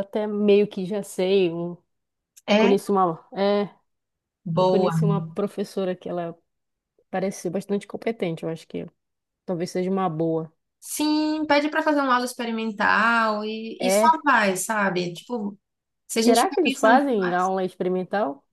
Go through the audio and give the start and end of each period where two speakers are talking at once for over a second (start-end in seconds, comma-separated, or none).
16.2-17.5